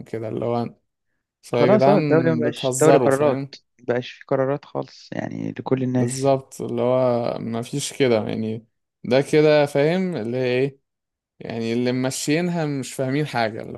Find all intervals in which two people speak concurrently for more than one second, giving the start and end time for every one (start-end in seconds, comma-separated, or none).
1.6-3.4